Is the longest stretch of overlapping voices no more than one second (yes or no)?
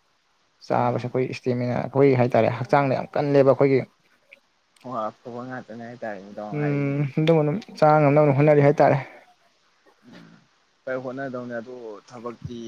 yes